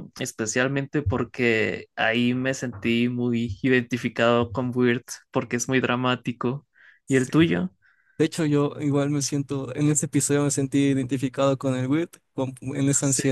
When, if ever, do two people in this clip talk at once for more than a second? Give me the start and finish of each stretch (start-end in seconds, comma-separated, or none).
none